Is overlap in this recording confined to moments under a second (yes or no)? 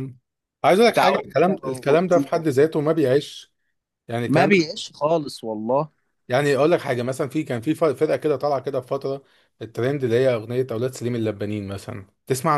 no